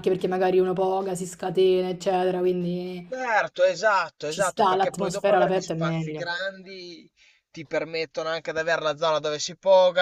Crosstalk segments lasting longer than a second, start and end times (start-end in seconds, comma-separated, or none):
4.3-6.3